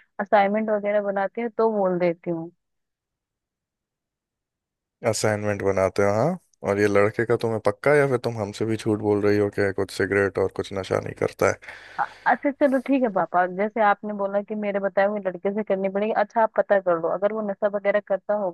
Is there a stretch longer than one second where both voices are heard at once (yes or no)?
no